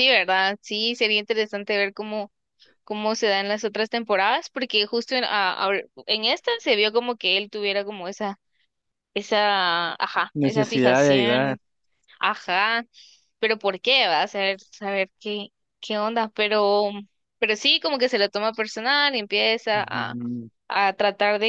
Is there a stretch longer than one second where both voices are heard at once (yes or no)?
yes